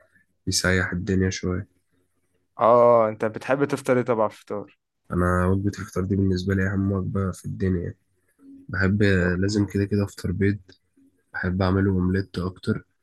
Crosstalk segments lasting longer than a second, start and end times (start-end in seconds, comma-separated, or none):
none